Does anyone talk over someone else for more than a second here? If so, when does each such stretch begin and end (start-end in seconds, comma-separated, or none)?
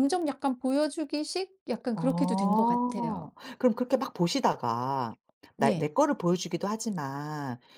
1.9-3.4